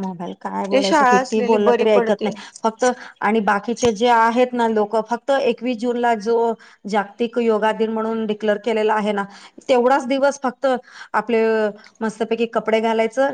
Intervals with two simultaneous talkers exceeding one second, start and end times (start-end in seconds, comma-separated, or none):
0.7-2.3